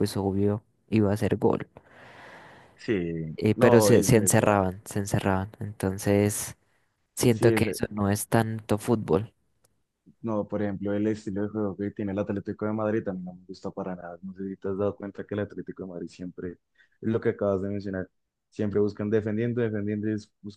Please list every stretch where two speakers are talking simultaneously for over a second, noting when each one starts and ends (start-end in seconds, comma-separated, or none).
3.4-4.6